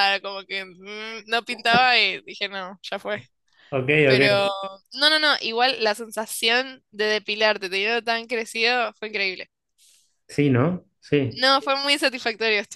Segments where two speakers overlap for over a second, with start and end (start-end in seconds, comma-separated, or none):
none